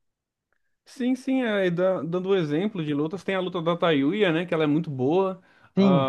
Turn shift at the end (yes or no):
yes